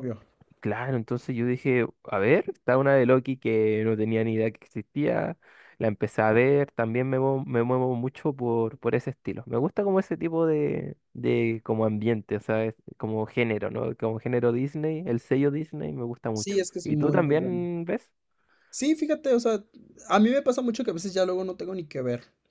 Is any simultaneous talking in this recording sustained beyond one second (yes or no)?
yes